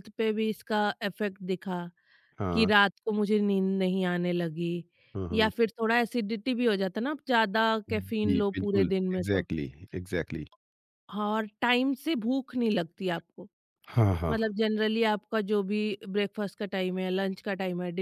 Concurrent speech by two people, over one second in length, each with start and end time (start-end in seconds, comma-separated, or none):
7.9-9.5